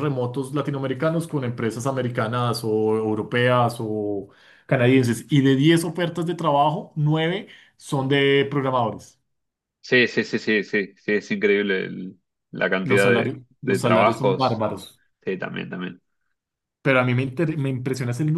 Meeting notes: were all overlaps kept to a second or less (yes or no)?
no